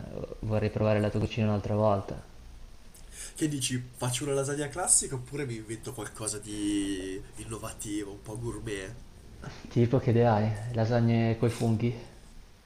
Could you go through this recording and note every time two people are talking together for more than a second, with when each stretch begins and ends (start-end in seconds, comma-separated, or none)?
none